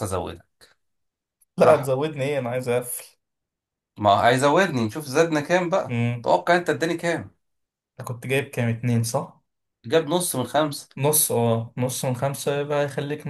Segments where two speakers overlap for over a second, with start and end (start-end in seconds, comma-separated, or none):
none